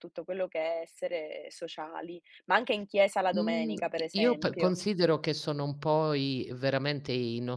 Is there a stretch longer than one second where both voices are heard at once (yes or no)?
yes